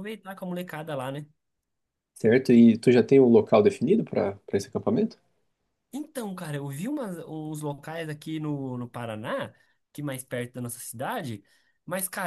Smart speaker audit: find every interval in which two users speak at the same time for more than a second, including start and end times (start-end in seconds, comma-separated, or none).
none